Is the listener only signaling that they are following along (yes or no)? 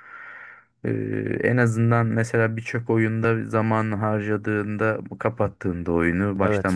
yes